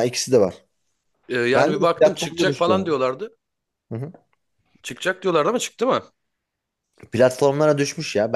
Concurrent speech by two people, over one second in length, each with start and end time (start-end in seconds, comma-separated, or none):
1.6-3.0